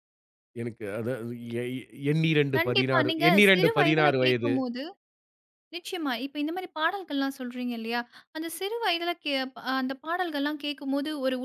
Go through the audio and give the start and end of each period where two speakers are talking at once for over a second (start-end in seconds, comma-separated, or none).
2.6-4.5